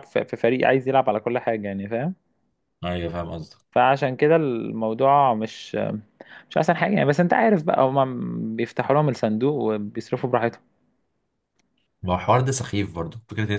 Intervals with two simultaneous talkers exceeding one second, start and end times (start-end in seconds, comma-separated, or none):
none